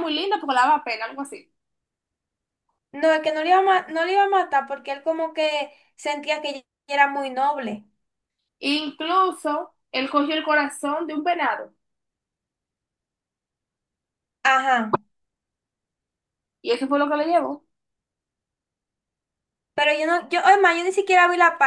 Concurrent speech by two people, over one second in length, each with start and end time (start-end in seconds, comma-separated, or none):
none